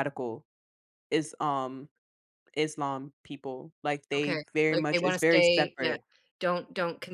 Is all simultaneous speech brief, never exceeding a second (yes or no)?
no